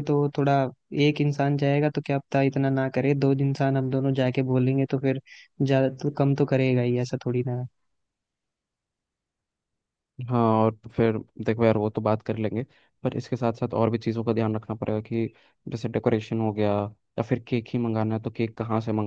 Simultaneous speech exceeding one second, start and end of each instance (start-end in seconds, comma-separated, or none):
none